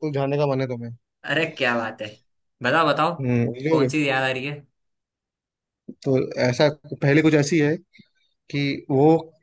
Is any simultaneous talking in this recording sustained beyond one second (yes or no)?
no